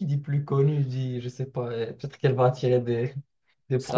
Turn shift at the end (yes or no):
yes